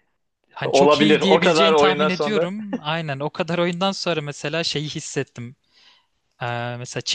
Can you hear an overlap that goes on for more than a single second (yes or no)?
yes